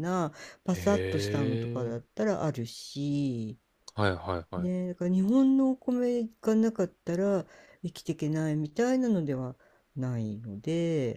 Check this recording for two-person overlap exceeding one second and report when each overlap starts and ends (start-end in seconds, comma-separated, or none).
0.7-1.9